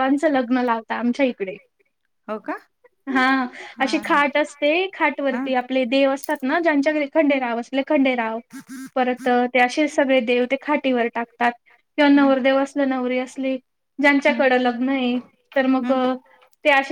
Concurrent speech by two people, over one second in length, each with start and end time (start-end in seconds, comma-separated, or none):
none